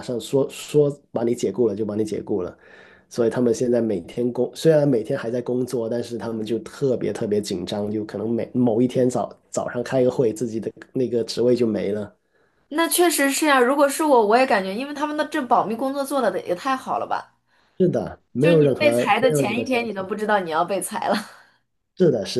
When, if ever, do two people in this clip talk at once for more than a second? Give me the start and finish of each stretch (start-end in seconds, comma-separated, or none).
18.4-20.1